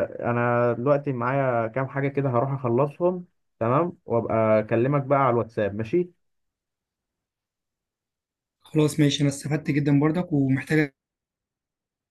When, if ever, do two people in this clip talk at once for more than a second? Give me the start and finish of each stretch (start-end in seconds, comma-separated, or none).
none